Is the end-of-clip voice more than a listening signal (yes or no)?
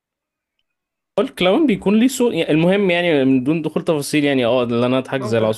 no